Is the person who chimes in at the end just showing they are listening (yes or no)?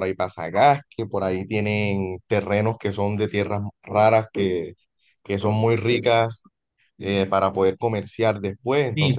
no